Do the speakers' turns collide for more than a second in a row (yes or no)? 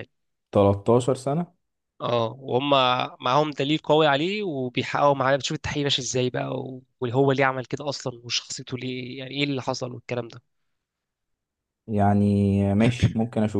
no